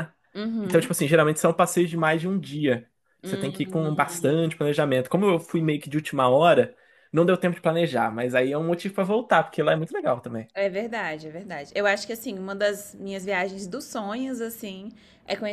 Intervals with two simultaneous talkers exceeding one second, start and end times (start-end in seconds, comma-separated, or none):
3.2-4.4